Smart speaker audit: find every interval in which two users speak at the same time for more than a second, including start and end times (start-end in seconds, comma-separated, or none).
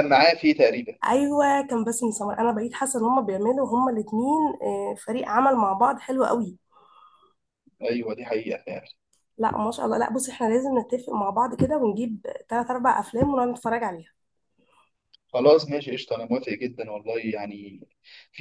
none